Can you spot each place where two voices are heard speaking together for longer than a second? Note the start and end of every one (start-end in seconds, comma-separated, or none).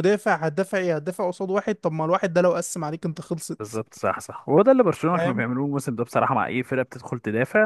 none